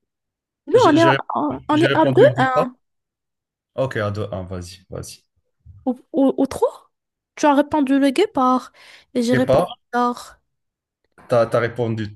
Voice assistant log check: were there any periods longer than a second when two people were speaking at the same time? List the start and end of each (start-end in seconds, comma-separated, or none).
0.7-2.7